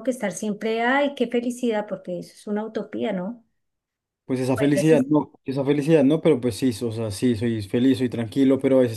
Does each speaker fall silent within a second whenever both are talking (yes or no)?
yes